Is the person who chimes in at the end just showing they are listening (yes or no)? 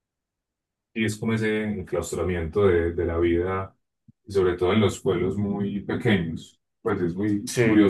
yes